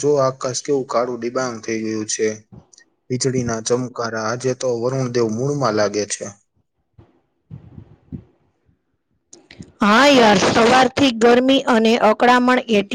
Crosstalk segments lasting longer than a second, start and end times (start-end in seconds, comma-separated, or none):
none